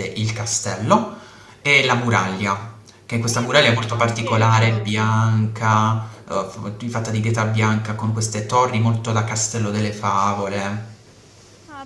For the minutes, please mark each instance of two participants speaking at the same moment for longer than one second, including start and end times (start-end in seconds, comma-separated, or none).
3.3-4.9